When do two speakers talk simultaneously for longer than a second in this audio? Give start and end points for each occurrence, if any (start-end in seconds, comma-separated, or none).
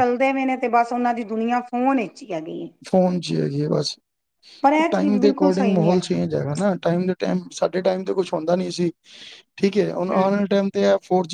4.9-6.2